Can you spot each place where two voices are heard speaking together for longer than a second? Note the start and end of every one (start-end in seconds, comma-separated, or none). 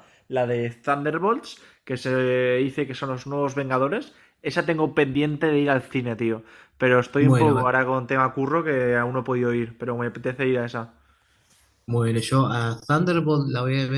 none